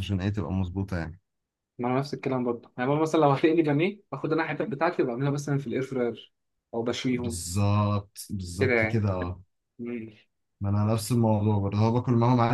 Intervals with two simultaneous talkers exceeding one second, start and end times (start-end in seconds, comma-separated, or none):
none